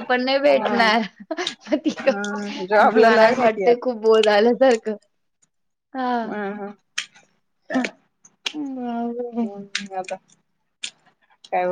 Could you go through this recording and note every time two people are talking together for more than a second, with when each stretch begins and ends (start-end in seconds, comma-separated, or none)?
2.1-4.0